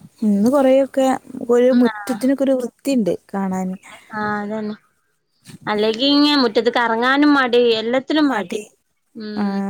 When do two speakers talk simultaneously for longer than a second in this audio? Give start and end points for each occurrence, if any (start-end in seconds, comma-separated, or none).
none